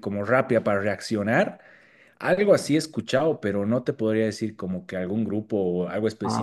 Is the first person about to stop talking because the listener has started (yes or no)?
yes